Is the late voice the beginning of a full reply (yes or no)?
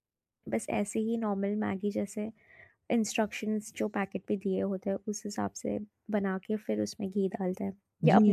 yes